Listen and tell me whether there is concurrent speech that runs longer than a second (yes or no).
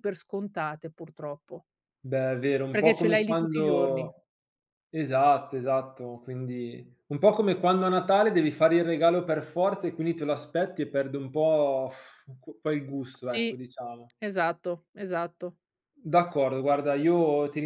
yes